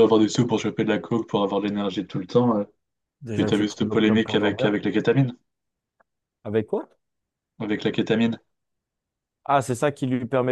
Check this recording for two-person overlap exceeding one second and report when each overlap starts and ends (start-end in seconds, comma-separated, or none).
3.3-4.8